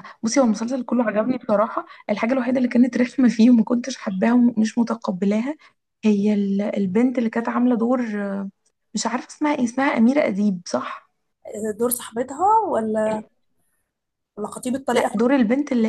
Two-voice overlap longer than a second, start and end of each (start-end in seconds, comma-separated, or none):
none